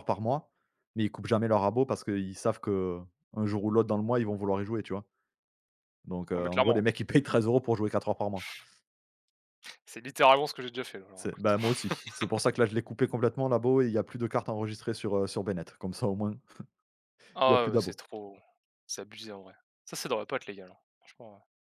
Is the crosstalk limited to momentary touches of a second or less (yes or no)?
yes